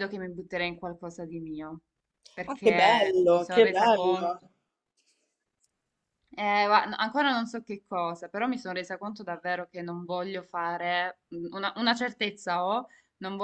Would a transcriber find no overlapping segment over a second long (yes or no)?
no